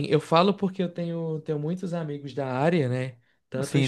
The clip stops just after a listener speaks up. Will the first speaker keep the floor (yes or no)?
yes